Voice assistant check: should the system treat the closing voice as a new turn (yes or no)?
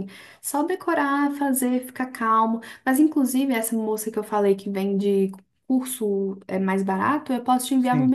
no